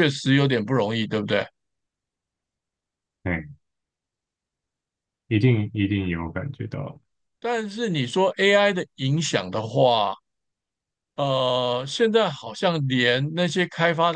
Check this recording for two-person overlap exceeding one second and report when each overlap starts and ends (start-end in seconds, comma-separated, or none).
none